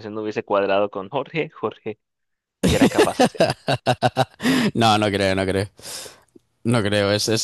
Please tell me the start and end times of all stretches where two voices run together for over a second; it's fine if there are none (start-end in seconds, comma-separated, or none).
none